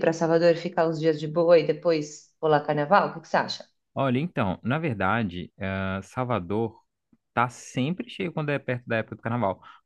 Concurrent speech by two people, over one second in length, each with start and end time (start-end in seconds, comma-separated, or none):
none